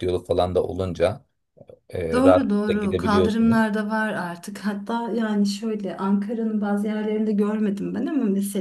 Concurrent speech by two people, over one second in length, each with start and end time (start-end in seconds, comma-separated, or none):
2.1-3.7